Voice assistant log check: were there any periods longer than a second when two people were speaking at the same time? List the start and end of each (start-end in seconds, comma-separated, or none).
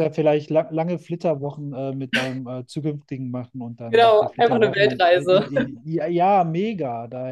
3.9-5.5